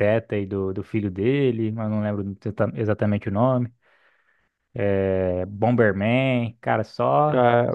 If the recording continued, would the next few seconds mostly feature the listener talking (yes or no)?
yes